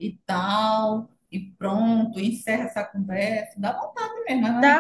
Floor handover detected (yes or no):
yes